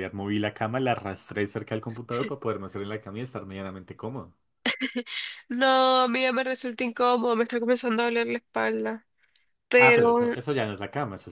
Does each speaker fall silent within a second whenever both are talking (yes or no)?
yes